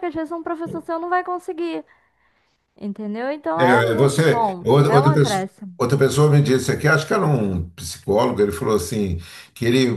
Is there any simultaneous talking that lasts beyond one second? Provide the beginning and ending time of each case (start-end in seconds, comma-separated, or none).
3.6-5.7